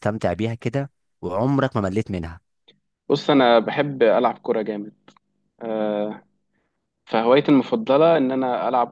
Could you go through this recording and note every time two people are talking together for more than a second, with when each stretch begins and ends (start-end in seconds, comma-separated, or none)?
none